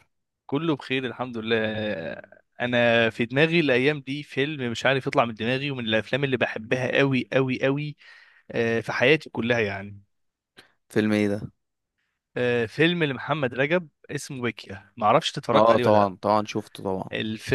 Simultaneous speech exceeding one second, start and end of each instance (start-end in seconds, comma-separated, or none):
none